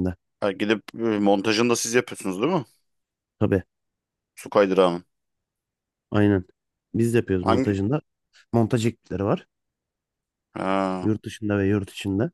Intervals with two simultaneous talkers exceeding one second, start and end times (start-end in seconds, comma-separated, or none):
none